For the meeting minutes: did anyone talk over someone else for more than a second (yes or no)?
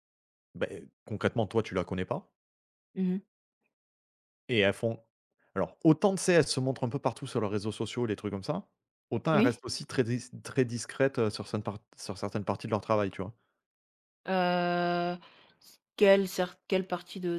no